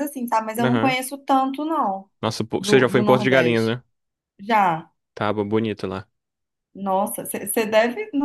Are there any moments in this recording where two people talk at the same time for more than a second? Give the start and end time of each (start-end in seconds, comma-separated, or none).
2.6-3.8